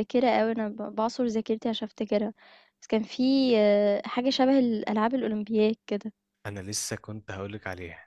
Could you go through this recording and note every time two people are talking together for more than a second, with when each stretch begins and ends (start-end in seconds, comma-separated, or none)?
none